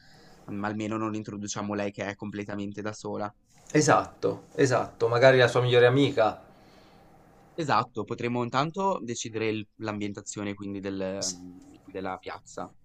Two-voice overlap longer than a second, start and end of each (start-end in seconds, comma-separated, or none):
none